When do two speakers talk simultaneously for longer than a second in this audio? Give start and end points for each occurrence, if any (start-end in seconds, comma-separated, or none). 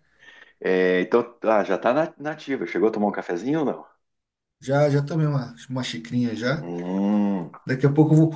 none